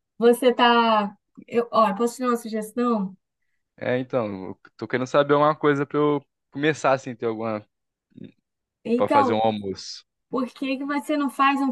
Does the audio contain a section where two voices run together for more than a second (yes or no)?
no